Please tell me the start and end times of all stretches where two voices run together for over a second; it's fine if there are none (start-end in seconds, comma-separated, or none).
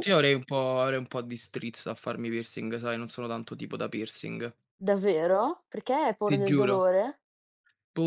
none